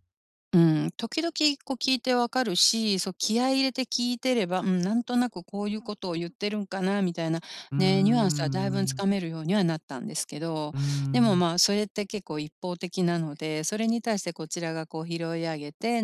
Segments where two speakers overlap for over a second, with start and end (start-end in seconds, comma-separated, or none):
7.8-9.0